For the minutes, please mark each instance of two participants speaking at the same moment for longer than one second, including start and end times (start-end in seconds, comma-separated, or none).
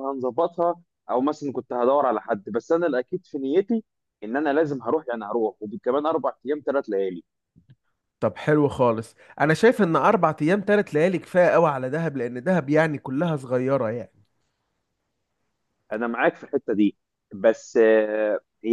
none